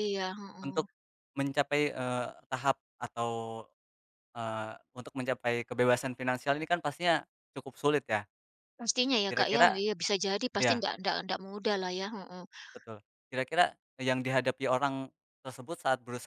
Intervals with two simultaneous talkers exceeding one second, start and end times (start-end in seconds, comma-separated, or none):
none